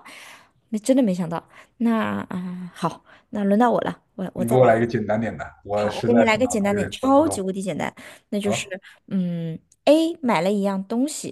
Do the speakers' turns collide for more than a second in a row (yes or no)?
yes